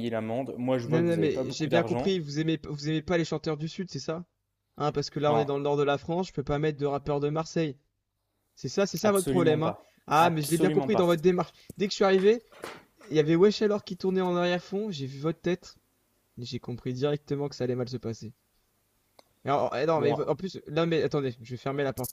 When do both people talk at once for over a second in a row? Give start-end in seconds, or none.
0.9-2.1, 9.0-11.1